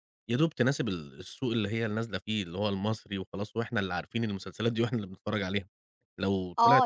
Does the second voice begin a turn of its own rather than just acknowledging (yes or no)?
yes